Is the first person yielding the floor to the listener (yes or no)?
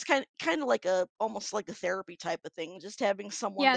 yes